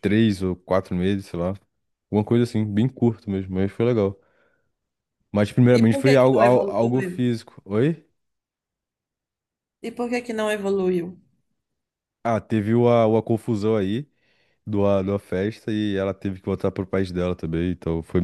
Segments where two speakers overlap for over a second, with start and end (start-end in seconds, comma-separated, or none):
5.8-7.2